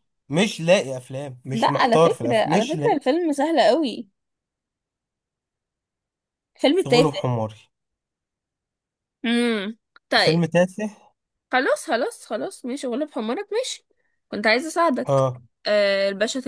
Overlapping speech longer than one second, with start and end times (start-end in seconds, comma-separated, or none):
1.5-3.0